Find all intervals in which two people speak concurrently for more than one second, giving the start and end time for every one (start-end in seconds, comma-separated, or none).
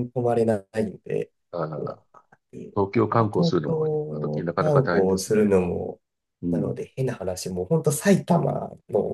2.7-5.5